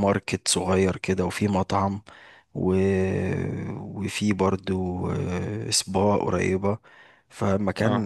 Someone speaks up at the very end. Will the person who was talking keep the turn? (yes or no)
yes